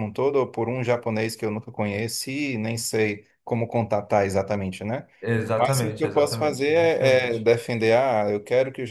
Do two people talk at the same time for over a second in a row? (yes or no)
yes